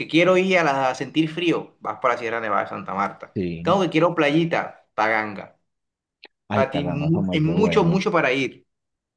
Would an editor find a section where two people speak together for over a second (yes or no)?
yes